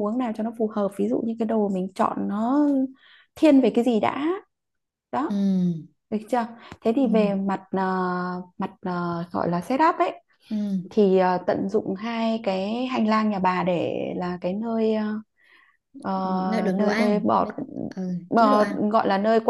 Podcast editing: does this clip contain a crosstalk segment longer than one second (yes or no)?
yes